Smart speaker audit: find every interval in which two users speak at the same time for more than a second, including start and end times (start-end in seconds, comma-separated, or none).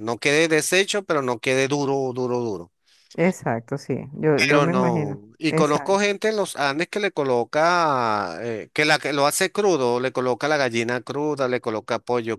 4.3-6.0